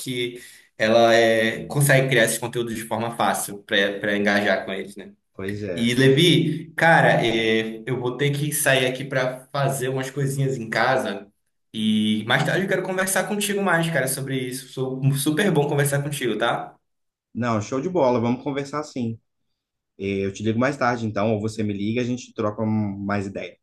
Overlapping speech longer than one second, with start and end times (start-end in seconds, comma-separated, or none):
none